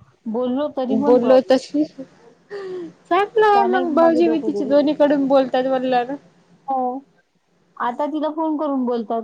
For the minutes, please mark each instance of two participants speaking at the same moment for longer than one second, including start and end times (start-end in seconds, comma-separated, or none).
3.5-5.1